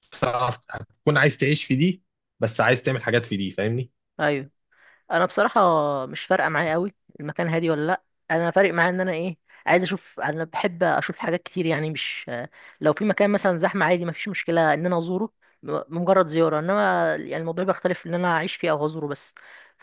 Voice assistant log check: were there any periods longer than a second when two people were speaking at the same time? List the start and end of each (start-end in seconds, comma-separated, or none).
none